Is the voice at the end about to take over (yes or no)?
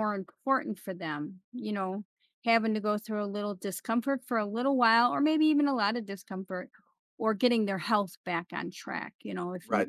yes